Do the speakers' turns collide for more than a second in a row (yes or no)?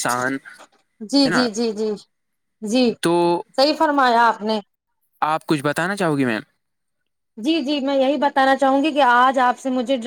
no